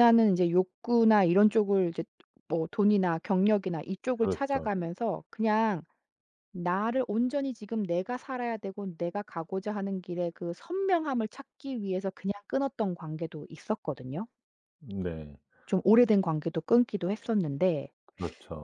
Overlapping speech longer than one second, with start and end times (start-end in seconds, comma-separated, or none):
none